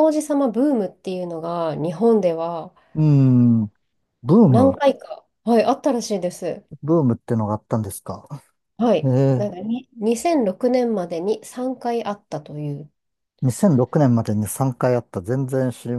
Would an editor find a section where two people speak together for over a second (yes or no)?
no